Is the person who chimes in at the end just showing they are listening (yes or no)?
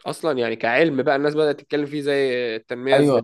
no